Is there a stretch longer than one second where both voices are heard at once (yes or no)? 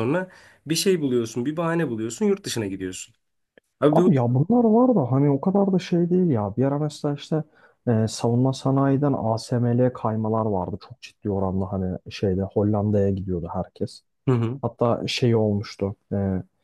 no